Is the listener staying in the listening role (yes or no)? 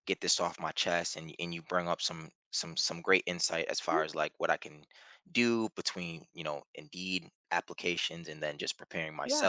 no